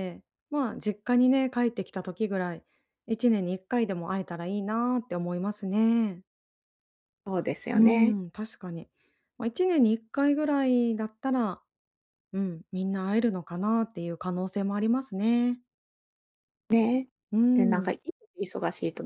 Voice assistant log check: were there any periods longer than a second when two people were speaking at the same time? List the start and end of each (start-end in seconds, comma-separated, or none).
none